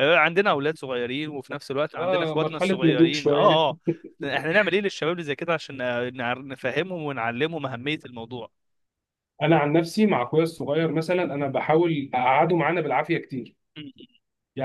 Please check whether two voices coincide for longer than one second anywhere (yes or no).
yes